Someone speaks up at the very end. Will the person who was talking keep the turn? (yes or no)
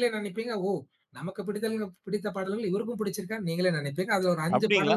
no